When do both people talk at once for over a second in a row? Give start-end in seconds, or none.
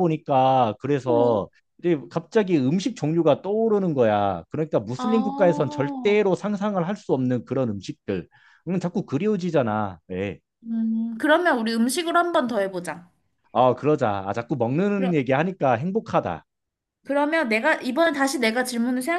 5.0-6.2